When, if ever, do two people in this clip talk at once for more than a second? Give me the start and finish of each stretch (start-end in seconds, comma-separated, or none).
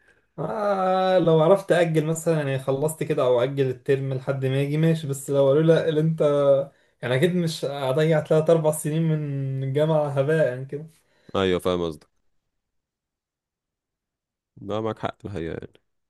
none